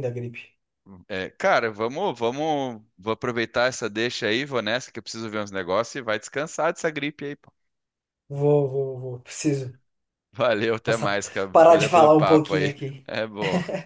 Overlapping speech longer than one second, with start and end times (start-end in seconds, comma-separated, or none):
10.8-13.0